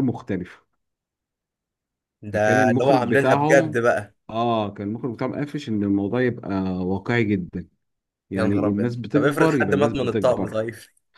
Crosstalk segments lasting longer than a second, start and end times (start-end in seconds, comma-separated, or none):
2.3-3.9, 8.3-10.6